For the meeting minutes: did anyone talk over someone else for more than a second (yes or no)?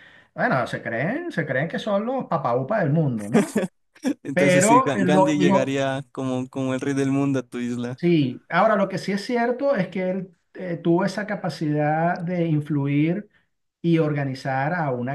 yes